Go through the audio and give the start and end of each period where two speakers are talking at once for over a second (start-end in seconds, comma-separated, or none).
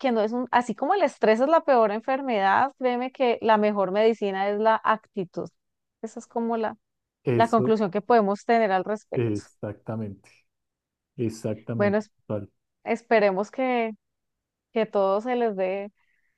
none